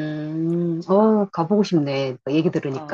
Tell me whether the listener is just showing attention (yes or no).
no